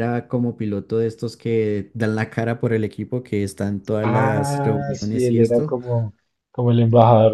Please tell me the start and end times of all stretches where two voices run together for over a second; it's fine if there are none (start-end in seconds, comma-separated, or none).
4.0-5.8